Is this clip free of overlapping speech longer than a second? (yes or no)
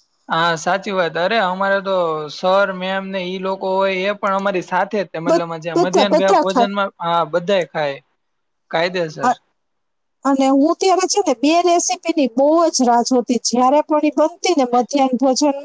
no